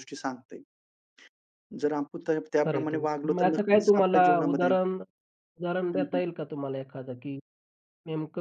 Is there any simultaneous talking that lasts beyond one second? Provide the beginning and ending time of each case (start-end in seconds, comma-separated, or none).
2.6-4.7